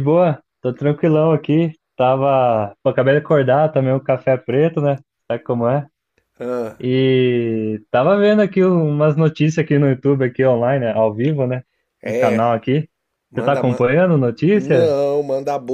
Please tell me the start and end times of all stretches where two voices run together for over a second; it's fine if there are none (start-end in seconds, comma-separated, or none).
none